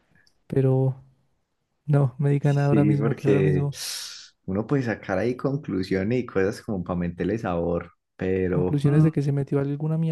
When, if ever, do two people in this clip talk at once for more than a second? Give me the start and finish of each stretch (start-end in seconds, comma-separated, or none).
2.4-3.7